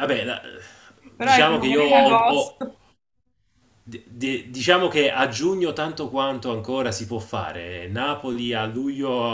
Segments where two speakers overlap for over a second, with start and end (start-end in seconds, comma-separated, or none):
1.2-2.6